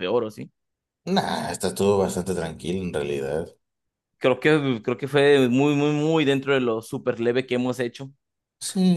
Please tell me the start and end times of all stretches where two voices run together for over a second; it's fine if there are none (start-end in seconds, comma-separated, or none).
none